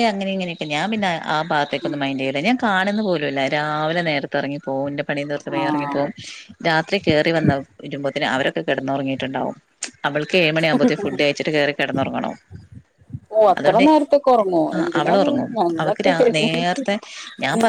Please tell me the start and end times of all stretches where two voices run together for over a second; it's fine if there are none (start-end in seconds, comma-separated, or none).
14.8-16.9